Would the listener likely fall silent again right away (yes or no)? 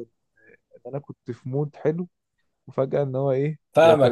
no